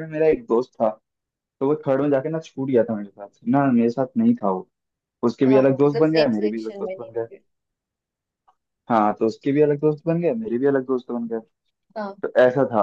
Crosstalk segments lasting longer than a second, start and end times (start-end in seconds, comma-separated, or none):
5.5-7.3